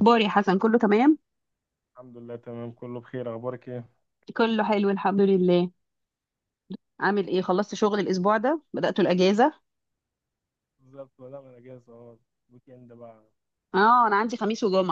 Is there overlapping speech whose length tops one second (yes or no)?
no